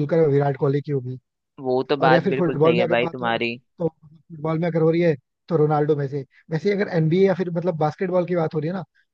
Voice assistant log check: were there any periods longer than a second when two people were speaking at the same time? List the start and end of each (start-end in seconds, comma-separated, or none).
2.0-3.4